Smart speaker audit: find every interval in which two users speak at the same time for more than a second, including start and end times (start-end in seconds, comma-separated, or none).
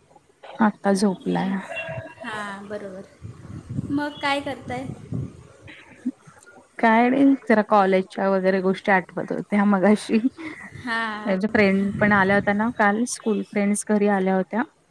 none